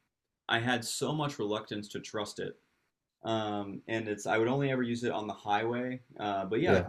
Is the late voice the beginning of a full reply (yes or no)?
no